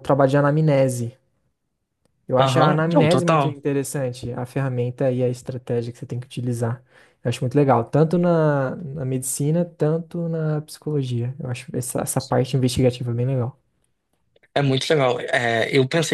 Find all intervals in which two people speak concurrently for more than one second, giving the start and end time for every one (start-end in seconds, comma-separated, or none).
2.4-3.6